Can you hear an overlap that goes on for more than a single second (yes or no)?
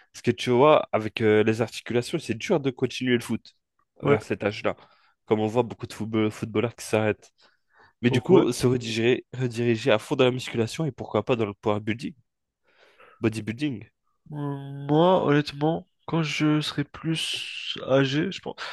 no